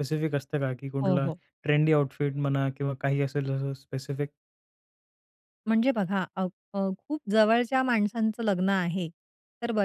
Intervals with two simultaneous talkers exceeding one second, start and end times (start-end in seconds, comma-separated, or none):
none